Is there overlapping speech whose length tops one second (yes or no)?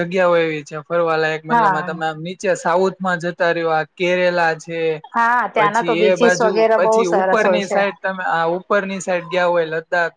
yes